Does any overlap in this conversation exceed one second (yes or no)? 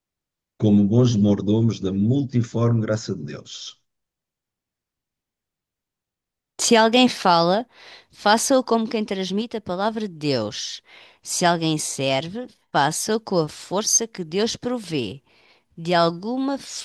no